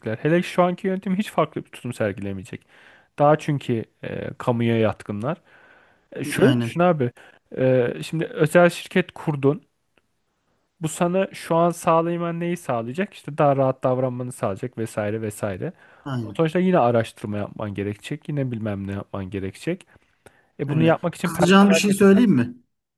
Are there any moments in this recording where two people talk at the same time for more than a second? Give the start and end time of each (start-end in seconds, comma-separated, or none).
20.7-22.4